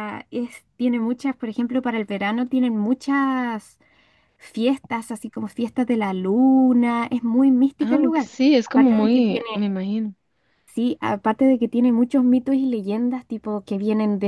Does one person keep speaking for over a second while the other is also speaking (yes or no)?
yes